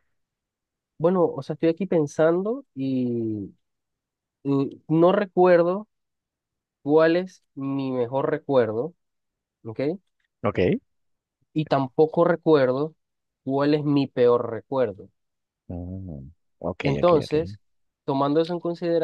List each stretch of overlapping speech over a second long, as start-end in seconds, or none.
none